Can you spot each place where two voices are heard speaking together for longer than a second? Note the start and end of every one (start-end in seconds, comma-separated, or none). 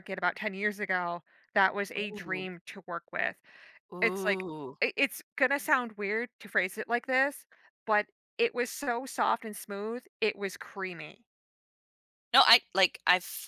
none